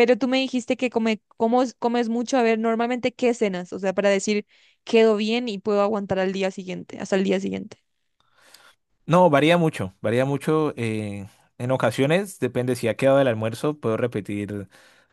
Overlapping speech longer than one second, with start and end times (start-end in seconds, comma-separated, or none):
none